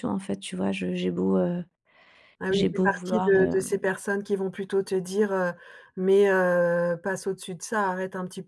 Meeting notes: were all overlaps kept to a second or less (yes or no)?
no